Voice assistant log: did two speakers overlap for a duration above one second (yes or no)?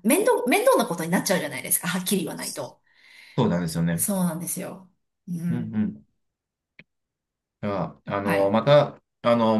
no